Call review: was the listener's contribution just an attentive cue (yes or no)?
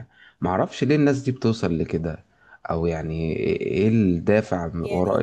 yes